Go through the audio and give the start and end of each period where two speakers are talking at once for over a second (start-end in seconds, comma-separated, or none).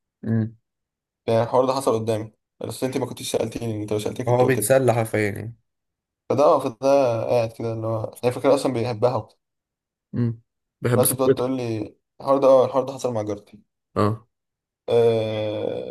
none